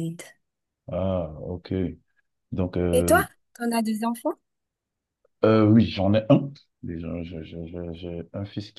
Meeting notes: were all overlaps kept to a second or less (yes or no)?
yes